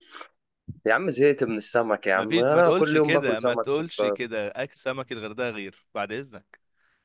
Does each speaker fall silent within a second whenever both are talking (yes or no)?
no